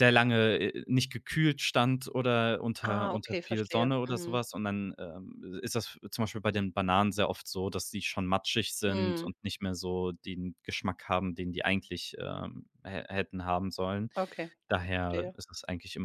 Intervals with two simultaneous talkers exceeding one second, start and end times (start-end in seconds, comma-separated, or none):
2.8-4.4